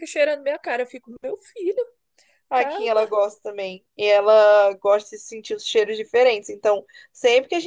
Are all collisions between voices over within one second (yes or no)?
yes